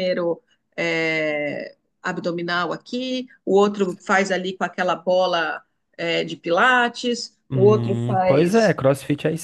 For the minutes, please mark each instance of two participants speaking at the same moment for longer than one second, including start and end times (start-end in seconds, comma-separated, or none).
7.5-8.8